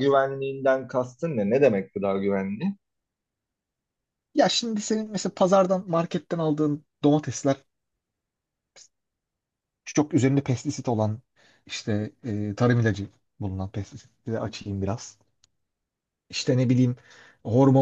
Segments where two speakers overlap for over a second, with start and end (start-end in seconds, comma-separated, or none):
none